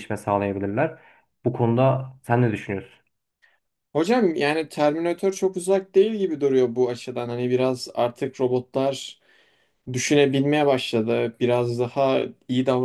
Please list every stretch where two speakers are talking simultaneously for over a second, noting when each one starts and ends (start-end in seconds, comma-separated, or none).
none